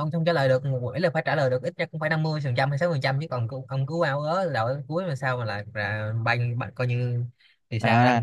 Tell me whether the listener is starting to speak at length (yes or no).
yes